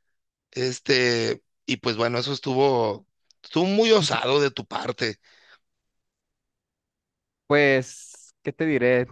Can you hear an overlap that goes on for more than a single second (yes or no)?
no